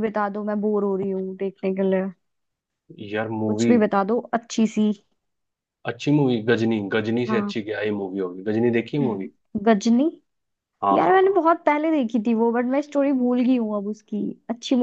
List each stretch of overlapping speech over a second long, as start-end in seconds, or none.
none